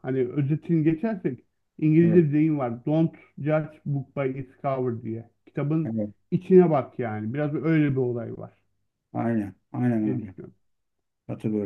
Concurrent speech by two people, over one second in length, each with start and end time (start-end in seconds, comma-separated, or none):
none